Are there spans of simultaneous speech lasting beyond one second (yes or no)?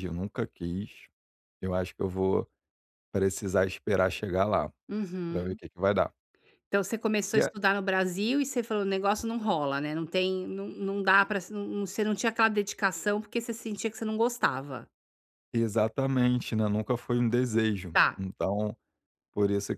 no